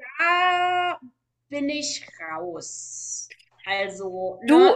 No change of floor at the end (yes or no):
yes